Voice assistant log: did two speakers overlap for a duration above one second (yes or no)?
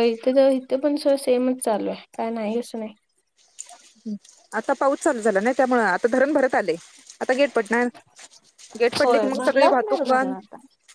yes